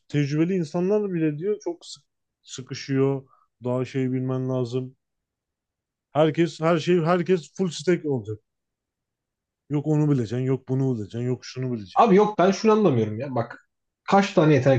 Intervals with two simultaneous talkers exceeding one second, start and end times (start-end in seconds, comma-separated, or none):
none